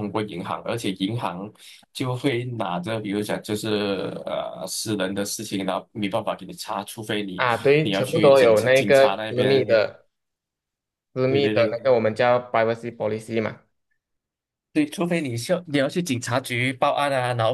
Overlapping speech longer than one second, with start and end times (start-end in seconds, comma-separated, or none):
7.3-9.7